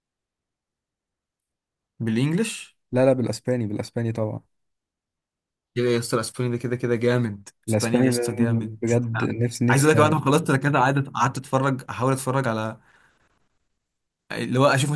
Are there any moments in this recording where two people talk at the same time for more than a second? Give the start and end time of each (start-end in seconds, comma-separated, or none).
7.7-8.9